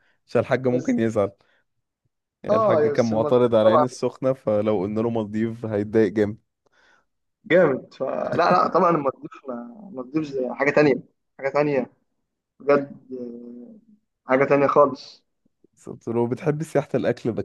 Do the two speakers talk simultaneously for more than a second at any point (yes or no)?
yes